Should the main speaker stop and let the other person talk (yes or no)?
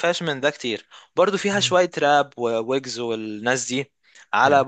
no